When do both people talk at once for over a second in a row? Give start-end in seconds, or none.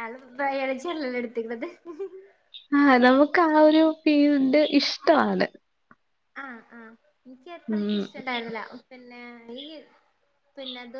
none